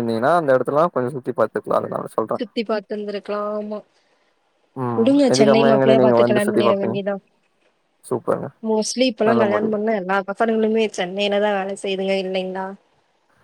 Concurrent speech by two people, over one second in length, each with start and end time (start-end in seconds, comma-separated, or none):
5.0-7.0